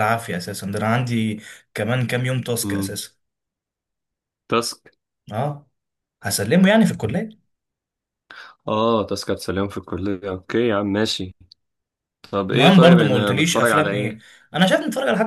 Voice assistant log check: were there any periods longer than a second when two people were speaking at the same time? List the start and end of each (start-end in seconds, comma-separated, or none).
12.5-14.2